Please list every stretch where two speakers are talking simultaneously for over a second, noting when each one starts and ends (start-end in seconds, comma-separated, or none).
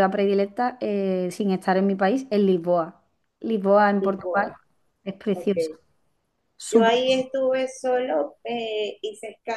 none